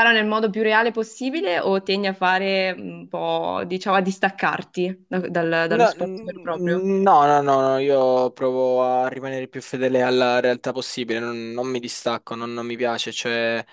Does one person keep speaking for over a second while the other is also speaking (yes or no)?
yes